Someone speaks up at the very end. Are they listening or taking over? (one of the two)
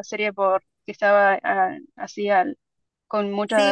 taking over